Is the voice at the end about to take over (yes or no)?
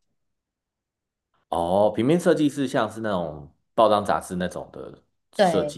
yes